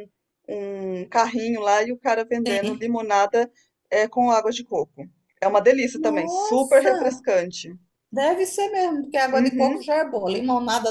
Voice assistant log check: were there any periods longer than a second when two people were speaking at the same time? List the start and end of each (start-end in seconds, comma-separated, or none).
5.9-7.2